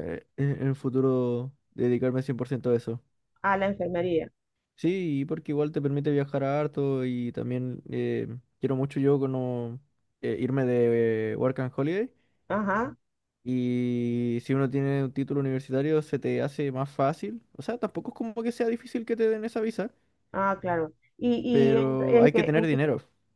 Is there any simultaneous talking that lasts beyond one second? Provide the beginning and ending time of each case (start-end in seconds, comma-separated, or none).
21.5-22.8